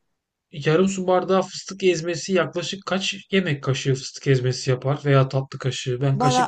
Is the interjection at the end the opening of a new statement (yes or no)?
yes